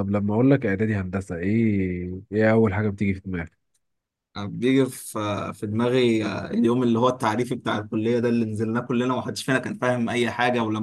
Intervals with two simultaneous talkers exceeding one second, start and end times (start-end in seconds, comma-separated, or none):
none